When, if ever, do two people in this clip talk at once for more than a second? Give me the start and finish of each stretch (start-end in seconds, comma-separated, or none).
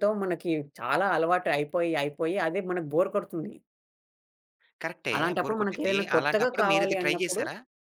5.2-7.4